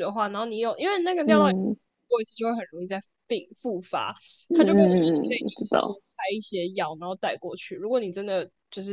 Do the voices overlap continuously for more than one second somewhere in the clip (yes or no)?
yes